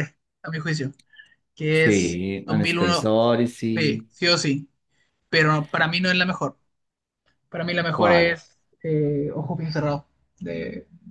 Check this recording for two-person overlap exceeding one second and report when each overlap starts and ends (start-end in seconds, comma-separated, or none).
1.7-3.1